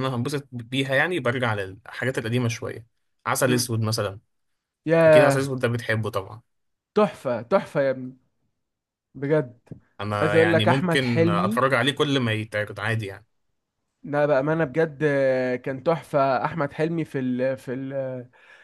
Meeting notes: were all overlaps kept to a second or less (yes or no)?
no